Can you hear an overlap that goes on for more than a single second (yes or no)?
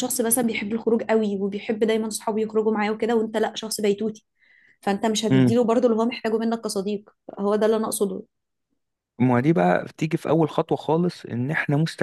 no